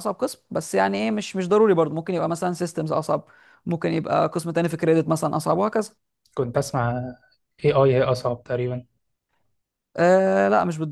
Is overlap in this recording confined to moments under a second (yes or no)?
yes